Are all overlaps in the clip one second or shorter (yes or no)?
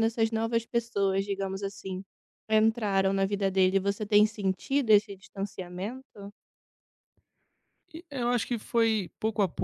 yes